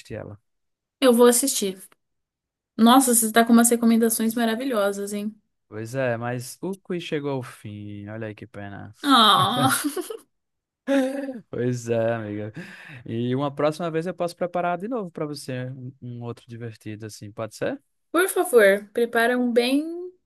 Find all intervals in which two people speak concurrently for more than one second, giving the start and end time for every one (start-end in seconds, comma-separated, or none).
none